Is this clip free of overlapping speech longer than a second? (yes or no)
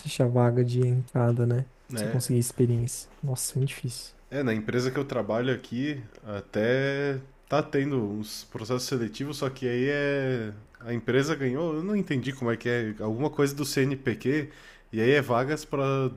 yes